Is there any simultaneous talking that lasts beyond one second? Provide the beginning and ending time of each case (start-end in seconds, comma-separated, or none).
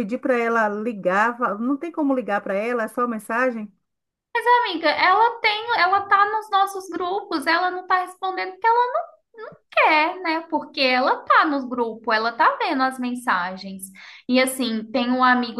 none